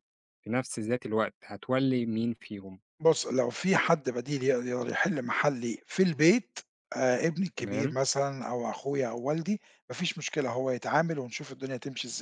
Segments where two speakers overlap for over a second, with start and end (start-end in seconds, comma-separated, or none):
none